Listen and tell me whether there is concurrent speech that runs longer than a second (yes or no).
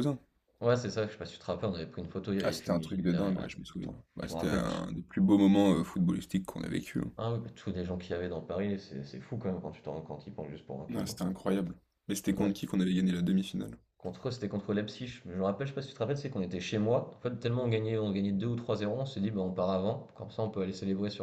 yes